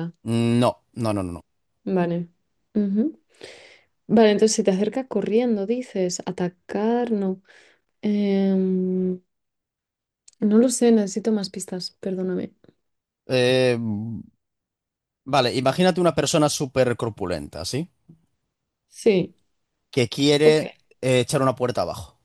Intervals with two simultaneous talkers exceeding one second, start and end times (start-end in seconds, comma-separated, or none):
none